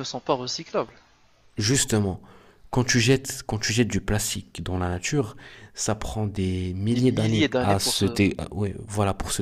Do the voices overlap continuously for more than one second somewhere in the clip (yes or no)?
yes